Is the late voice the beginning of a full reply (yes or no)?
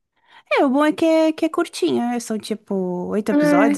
no